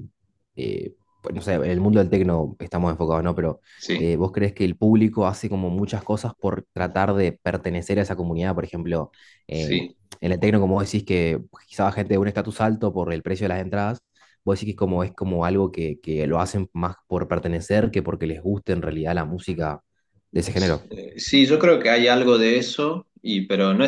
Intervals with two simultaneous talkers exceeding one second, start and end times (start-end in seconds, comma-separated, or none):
none